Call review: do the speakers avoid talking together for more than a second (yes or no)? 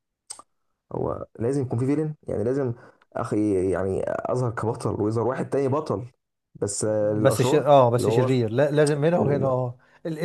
no